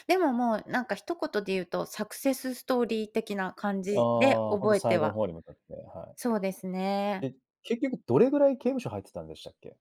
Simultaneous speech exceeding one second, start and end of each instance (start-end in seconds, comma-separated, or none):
3.9-5.2